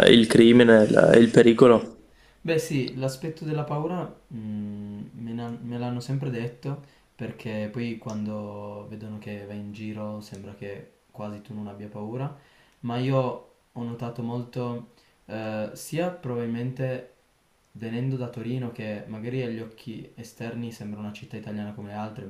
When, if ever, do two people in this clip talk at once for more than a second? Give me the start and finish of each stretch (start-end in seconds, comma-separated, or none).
none